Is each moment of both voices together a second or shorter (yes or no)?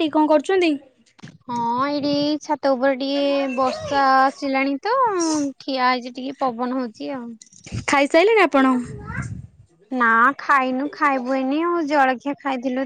yes